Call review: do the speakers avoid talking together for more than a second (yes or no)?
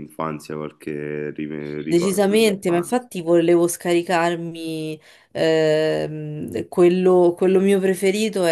no